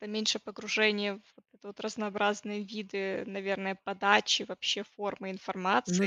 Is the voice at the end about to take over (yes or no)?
yes